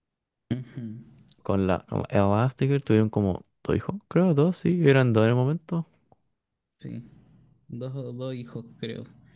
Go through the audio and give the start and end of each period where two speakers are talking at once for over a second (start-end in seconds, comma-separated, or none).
none